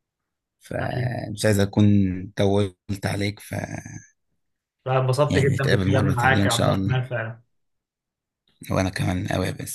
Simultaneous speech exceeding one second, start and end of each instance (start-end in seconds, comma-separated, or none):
5.3-7.0